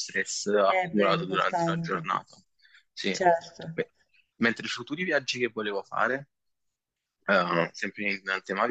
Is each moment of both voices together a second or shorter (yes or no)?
no